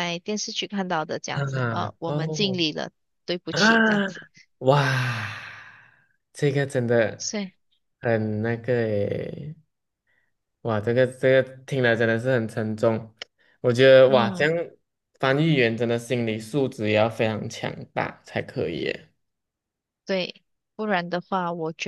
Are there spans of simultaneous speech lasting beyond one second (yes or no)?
yes